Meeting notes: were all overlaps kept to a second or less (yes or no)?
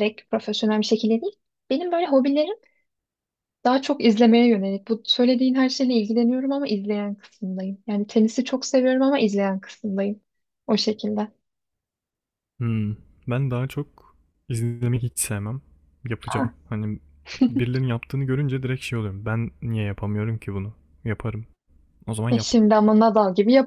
yes